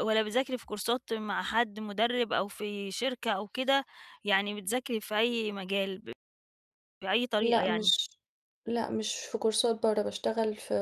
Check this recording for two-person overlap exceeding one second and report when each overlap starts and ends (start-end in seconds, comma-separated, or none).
none